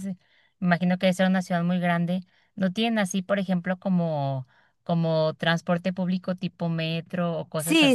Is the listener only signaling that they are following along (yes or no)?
no